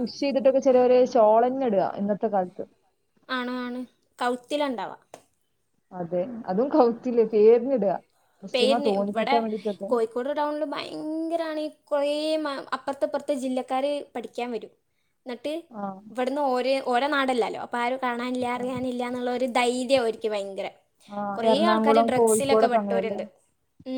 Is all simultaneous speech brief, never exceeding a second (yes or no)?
no